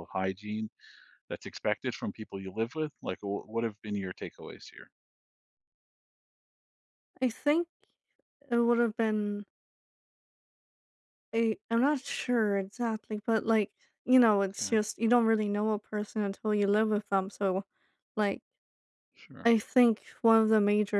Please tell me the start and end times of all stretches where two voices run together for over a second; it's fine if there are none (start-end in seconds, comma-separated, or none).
none